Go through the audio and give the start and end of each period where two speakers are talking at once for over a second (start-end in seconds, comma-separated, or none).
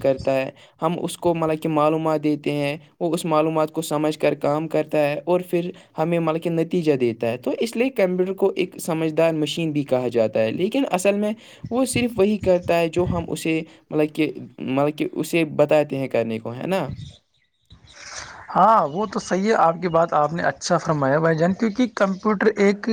none